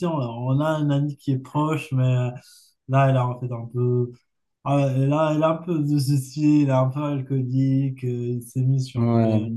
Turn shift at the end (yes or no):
no